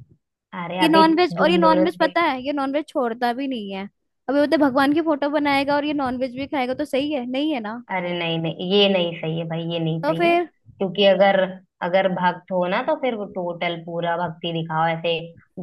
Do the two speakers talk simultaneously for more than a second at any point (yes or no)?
yes